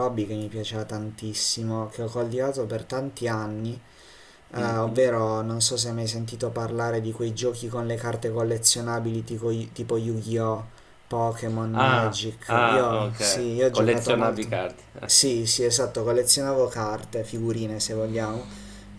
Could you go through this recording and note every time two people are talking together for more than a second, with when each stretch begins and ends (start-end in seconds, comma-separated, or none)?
11.7-15.1